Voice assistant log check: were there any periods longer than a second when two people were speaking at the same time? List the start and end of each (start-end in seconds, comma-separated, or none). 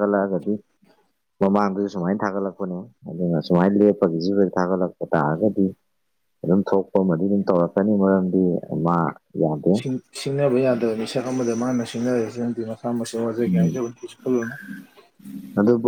none